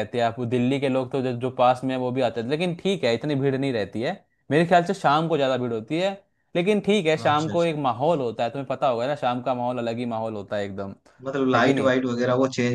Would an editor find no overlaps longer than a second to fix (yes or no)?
yes